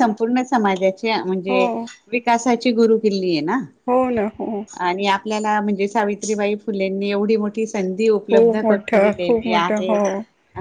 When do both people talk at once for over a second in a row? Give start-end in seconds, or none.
8.3-9.9